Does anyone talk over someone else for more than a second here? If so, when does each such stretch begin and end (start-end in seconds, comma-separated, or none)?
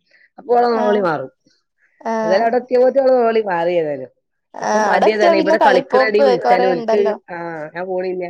4.7-7.1